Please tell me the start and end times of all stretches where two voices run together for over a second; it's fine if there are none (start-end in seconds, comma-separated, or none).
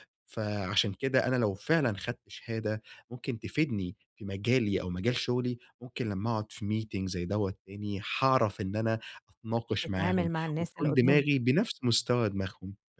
9.8-11.4